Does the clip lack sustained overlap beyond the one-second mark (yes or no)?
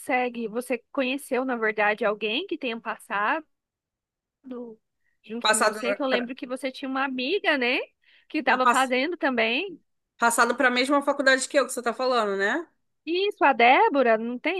yes